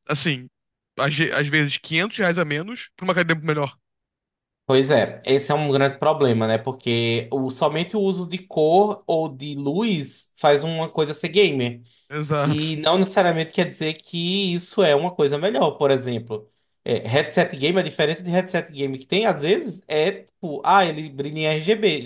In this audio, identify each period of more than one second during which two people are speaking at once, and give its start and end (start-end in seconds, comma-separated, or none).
none